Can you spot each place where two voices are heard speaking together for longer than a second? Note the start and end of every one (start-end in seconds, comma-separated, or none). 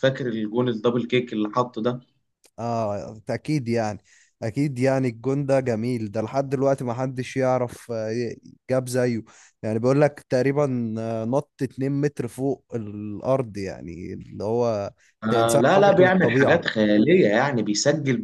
15.3-16.6